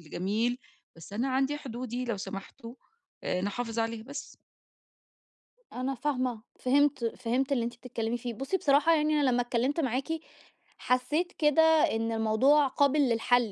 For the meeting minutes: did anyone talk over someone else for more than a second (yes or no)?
no